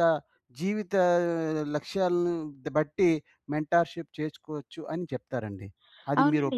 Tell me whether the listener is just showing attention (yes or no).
no